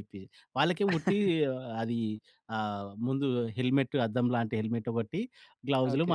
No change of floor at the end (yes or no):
yes